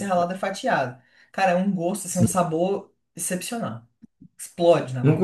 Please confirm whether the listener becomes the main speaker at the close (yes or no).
yes